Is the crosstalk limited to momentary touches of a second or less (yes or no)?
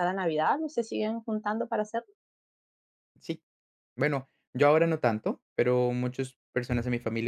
yes